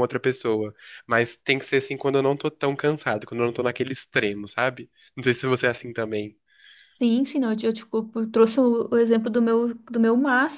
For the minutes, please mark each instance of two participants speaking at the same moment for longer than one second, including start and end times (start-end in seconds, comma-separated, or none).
none